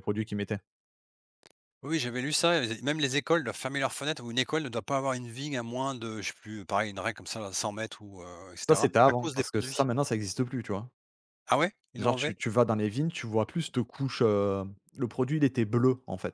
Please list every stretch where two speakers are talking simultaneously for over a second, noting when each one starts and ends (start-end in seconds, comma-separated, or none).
8.6-9.9